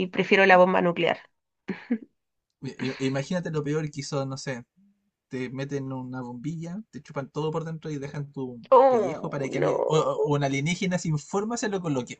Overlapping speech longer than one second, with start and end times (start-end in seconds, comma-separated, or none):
8.7-10.1